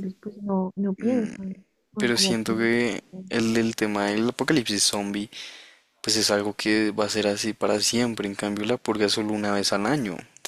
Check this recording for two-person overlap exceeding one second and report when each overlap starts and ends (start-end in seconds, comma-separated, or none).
2.0-3.2